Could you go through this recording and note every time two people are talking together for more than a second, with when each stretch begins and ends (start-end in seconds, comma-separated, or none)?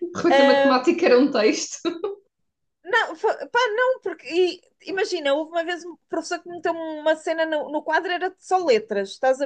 none